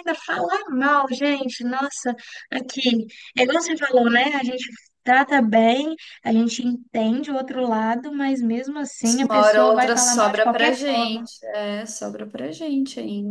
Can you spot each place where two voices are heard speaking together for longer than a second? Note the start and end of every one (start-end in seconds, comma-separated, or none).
9.2-11.3